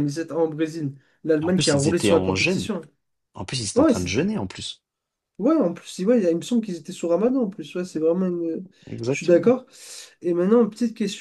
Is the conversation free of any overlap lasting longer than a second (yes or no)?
no